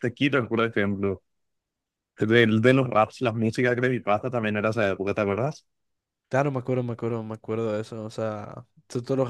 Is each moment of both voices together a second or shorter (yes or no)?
yes